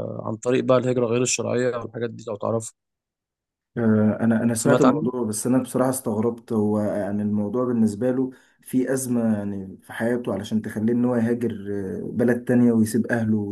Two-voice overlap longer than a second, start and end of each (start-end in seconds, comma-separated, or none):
none